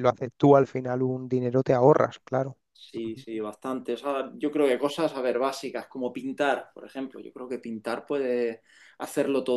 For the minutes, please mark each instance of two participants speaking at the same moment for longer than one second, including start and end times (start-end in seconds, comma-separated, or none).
none